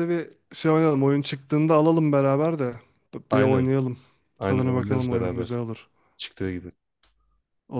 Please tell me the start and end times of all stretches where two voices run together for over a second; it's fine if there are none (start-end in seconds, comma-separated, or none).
4.4-5.6